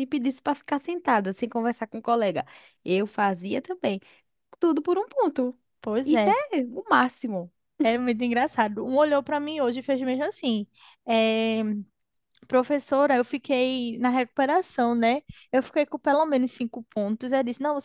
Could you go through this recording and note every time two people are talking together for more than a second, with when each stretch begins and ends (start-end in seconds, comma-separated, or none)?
none